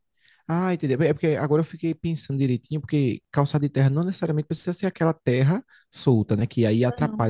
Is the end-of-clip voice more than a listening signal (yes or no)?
no